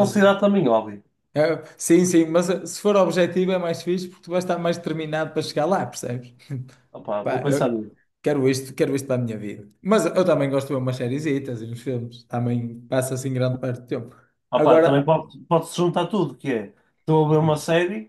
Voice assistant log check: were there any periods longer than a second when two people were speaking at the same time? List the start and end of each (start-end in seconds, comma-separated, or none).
none